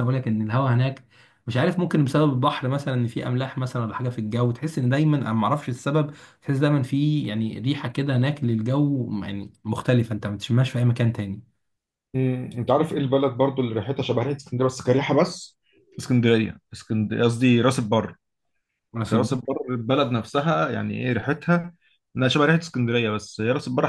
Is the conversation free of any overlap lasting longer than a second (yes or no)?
yes